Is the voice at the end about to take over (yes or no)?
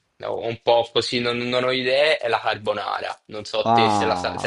yes